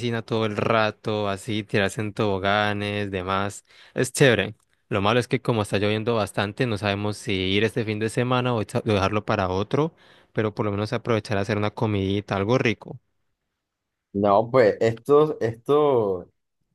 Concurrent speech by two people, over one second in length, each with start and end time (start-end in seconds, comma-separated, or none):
none